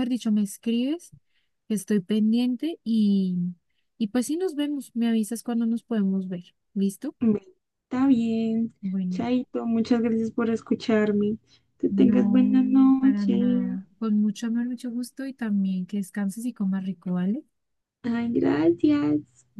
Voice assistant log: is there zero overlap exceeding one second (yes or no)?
no